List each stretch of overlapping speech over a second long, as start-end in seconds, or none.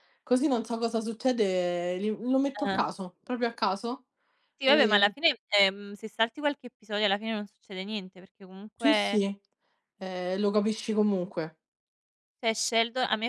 none